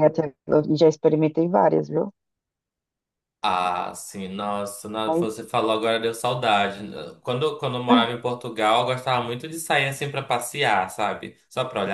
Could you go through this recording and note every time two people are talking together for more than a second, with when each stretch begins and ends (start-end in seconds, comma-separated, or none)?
none